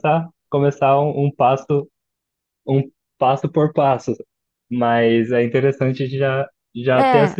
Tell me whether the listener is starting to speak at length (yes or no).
no